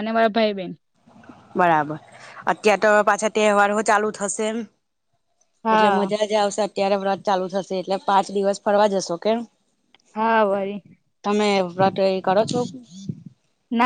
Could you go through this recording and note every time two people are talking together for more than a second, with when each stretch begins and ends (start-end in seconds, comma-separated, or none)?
none